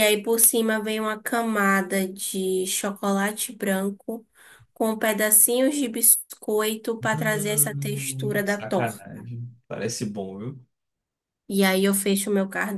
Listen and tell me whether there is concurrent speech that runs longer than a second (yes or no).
yes